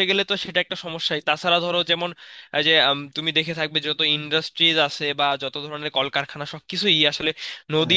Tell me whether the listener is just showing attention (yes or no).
yes